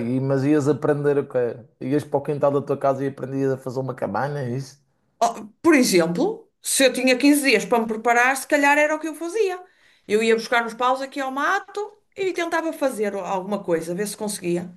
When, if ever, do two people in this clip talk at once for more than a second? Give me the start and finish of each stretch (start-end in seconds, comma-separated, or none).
none